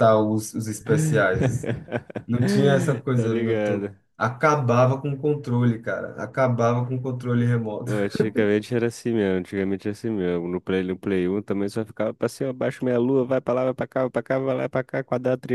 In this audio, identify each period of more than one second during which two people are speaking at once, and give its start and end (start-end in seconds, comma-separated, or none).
2.4-4.0